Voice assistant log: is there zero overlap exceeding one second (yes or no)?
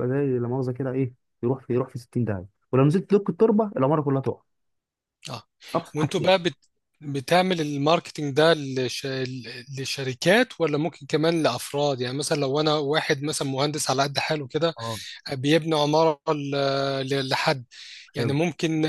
yes